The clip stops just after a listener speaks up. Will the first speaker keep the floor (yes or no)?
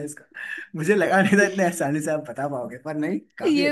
no